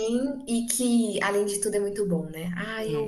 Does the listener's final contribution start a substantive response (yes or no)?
yes